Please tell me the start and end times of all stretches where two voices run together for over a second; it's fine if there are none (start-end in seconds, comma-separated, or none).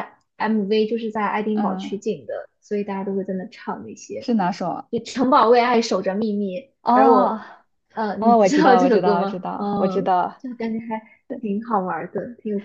8.2-10.4